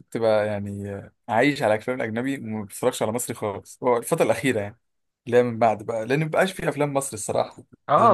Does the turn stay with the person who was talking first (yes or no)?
no